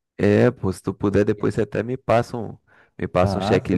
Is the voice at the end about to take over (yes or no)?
yes